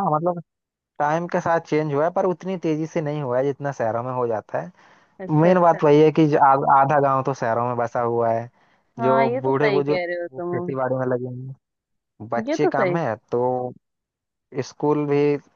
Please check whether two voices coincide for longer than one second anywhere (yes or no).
yes